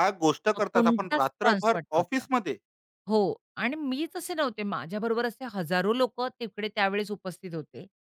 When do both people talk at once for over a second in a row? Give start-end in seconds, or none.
0.5-2.3